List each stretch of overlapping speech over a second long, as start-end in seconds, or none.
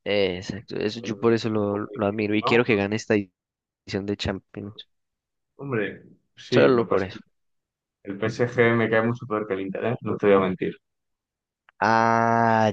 1.0-2.6